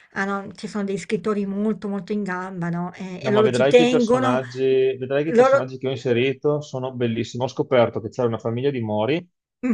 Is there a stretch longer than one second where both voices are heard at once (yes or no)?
yes